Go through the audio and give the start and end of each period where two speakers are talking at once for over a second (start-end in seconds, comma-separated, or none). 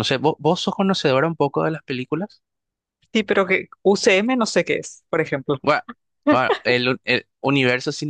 none